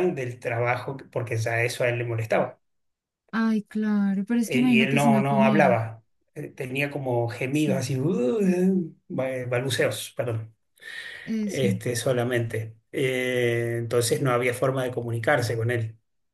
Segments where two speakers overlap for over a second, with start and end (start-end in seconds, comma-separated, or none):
4.5-5.8